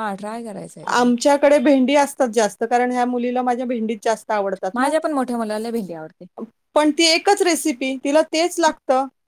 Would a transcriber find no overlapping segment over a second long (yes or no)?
yes